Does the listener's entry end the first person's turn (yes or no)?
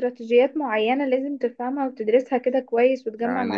yes